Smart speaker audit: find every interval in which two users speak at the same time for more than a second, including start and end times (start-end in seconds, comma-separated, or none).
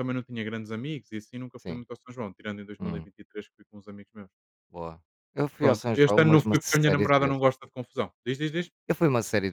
5.6-7.4